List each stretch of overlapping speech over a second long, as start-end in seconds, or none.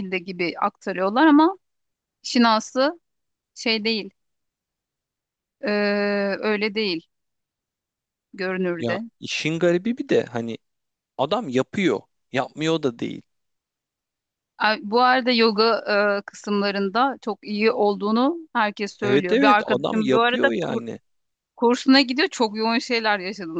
19.0-20.8